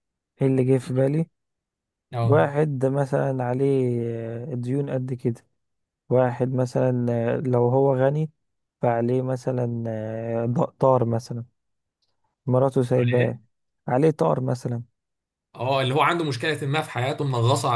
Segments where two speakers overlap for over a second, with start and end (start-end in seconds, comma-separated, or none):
none